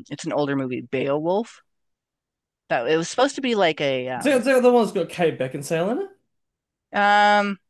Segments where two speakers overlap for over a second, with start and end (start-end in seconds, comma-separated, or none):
none